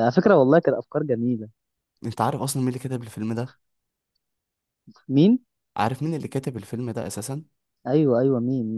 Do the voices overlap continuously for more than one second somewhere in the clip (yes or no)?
no